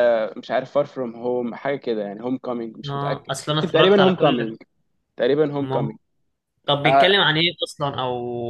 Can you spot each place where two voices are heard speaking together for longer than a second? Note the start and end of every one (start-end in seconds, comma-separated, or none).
2.9-4.5